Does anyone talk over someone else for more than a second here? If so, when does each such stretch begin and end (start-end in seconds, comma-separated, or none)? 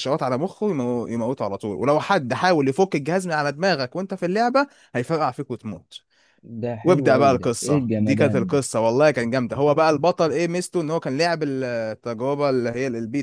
6.8-8.6